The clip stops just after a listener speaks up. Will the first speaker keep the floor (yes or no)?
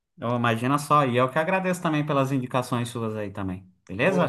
no